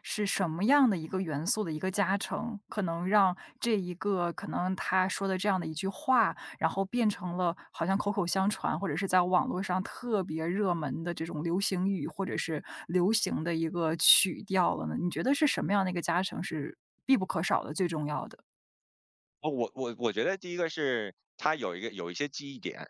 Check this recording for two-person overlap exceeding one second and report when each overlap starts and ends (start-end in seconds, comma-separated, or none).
none